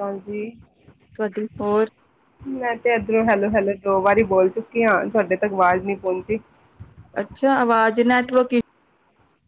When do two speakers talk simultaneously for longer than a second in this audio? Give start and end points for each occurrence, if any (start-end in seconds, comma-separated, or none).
none